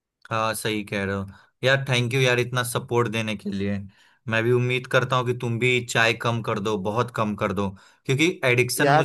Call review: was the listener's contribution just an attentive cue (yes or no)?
yes